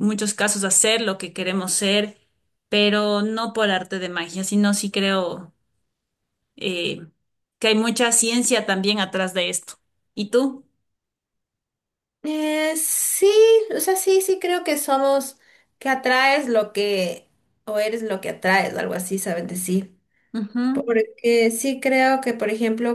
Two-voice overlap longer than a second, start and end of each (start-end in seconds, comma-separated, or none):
none